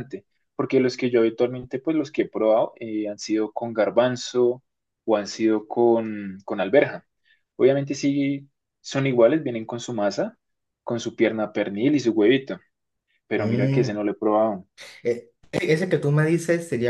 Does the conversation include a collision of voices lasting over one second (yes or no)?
no